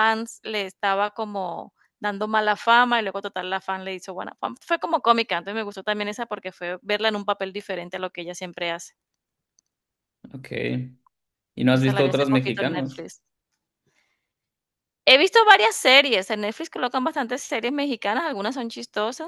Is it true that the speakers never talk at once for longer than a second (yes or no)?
no